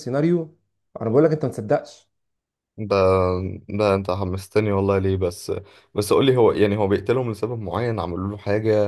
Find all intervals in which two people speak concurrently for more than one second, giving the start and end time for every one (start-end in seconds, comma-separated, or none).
none